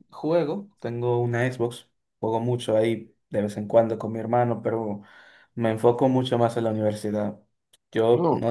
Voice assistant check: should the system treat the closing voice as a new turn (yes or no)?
no